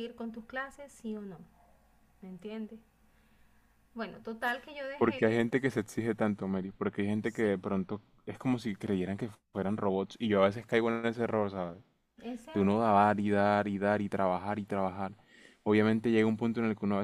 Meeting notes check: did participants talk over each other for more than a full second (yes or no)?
no